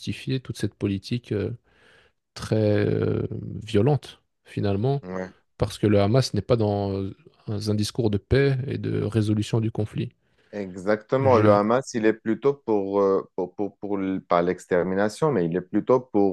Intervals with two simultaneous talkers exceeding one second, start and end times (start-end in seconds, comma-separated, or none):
none